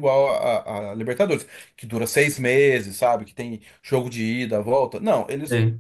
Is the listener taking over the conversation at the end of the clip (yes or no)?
no